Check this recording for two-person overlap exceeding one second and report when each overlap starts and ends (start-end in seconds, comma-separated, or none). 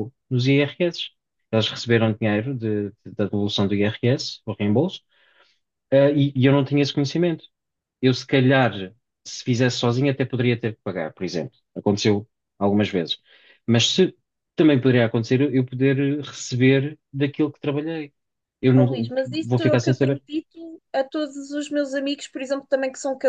18.8-20.2